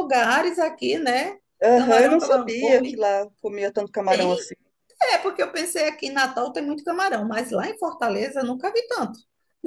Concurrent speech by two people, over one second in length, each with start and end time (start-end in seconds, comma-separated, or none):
1.7-3.0